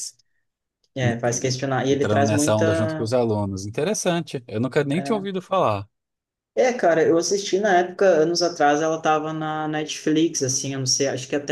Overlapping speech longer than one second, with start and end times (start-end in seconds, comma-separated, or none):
1.0-3.1